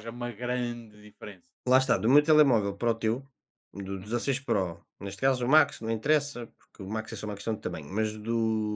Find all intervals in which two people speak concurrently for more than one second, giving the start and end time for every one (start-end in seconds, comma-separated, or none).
none